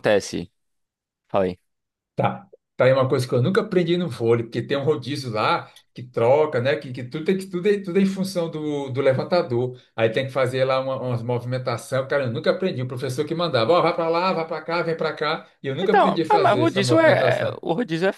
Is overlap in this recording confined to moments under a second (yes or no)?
no